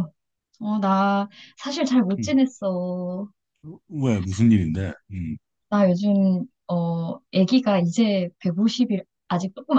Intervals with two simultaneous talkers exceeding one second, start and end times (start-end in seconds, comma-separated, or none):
none